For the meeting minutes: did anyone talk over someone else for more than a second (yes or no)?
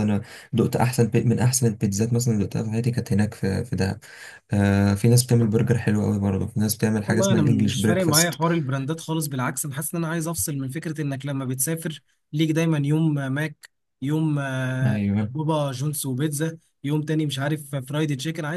yes